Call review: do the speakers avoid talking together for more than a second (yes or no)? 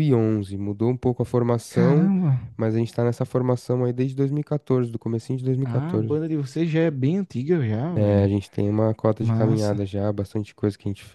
yes